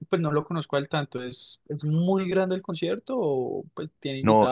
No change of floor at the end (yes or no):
no